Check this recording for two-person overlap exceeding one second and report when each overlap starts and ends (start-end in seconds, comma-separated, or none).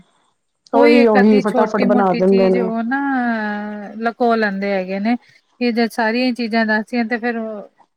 0.8-2.7